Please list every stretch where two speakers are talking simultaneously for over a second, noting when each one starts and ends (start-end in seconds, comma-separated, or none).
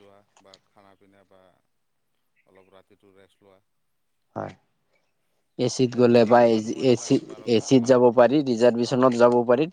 5.9-8.0